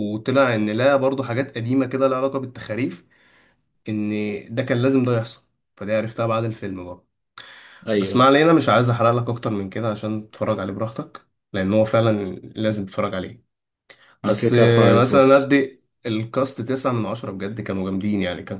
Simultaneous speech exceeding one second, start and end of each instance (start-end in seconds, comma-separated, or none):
14.2-15.5